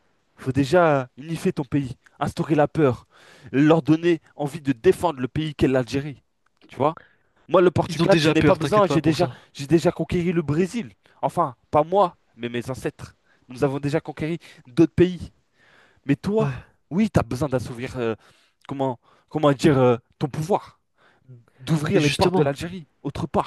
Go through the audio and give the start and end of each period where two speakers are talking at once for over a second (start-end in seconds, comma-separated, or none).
7.9-9.3